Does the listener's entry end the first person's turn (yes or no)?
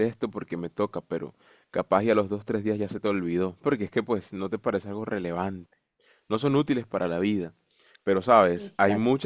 no